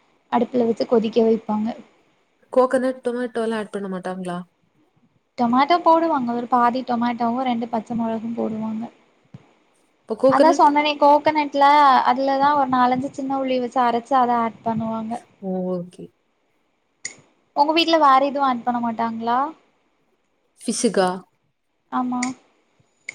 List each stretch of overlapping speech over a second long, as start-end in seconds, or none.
none